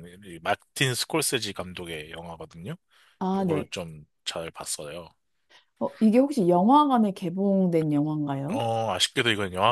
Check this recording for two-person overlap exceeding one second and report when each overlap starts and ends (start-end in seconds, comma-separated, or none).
none